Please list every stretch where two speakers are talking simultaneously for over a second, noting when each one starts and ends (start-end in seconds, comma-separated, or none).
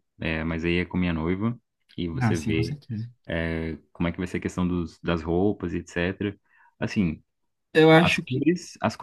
none